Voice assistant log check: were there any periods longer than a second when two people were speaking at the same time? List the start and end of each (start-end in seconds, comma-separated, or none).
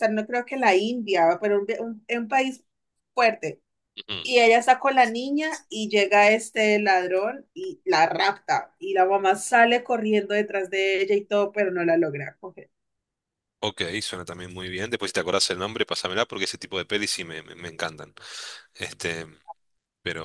none